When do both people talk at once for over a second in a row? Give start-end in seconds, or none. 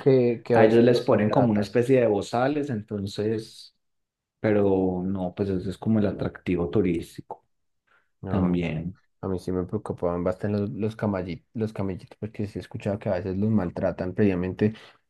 0.5-1.8